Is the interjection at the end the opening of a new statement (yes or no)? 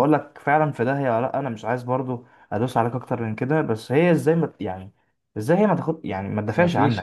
yes